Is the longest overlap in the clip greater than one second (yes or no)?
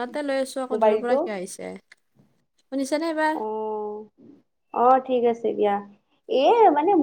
no